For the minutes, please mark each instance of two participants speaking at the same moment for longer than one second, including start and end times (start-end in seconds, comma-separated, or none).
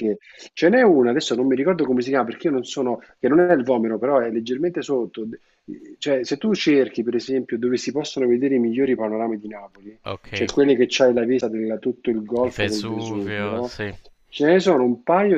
12.4-13.8